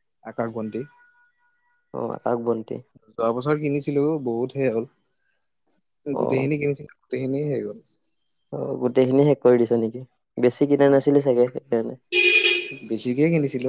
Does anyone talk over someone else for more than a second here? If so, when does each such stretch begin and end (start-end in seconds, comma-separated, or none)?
none